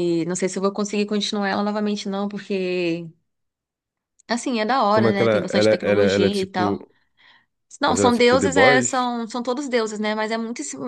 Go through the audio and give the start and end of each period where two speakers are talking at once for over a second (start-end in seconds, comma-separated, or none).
4.9-6.8, 7.8-9.1